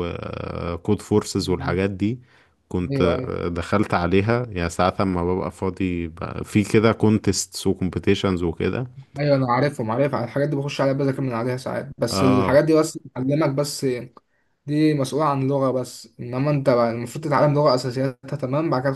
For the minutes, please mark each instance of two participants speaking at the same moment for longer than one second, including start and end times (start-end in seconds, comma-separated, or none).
none